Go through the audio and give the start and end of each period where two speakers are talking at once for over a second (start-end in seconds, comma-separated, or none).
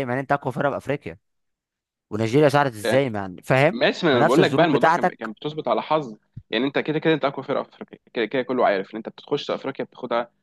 3.7-5.3